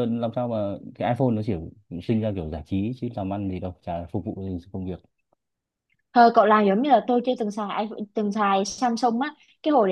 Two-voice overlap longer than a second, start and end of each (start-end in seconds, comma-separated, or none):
none